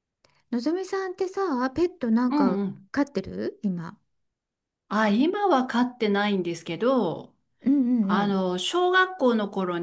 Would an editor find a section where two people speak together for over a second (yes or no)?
no